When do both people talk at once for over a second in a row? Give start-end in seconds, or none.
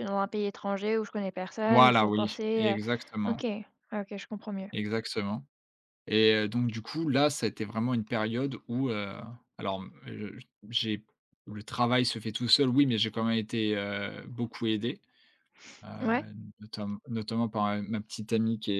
1.6-3.4